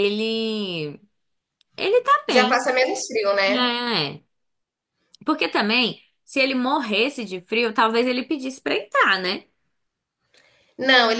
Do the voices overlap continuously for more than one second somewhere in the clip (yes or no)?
no